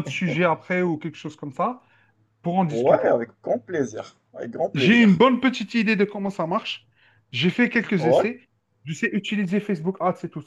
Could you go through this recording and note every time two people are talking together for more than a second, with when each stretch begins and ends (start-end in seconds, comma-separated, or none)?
none